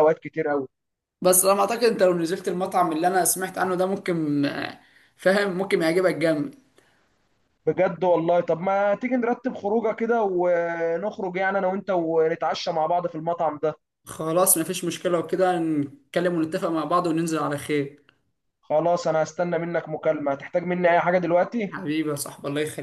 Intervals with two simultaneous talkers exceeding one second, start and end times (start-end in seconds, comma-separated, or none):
none